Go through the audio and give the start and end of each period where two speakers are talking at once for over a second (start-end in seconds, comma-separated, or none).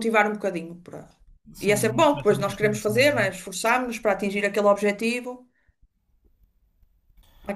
1.6-3.3